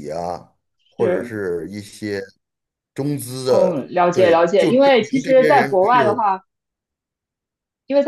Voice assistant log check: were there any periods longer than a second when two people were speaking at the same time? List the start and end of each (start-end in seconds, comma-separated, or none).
3.5-6.2